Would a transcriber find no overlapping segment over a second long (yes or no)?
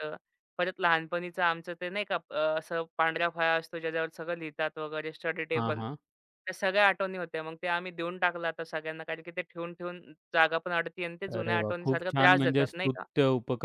no